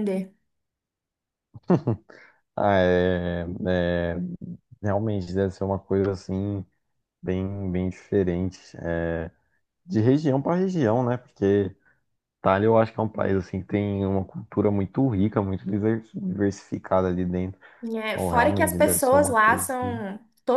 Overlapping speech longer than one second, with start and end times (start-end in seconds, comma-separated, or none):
18.1-20.0